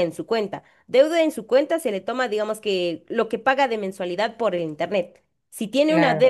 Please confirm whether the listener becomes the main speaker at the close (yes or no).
no